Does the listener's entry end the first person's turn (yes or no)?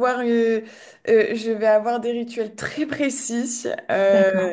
no